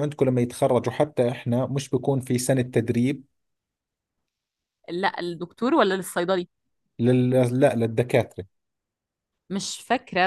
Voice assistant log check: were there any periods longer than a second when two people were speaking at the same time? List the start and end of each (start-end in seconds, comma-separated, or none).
none